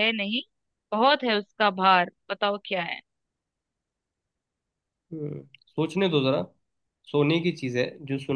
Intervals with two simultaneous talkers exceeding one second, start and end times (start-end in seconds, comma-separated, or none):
none